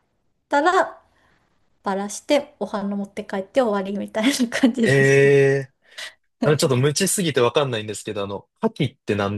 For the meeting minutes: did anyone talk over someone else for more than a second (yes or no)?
no